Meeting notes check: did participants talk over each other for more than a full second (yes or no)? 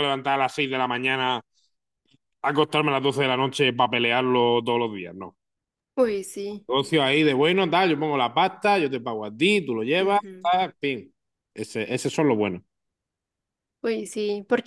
no